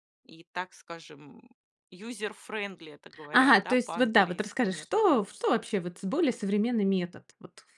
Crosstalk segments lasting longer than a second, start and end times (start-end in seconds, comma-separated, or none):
3.3-5.2